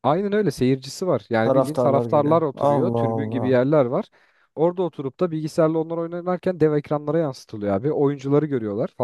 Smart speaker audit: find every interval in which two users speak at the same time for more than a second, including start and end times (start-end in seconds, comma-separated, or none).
1.4-3.6